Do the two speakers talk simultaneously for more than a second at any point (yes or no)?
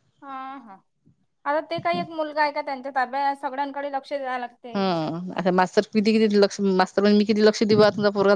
no